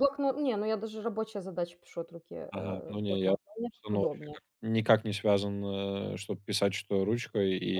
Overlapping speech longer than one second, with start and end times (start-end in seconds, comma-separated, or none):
2.5-4.4